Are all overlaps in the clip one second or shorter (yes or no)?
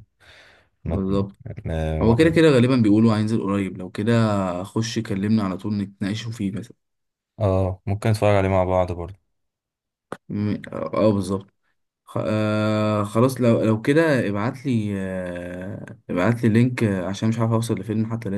yes